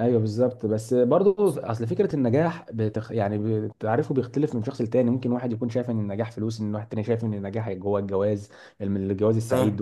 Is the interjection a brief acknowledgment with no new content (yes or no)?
yes